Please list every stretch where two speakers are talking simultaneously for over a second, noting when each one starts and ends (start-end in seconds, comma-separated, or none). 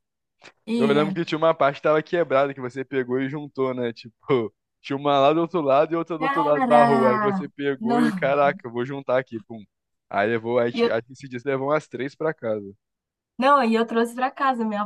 6.2-8.2